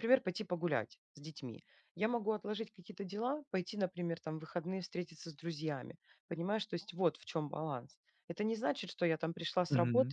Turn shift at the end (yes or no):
no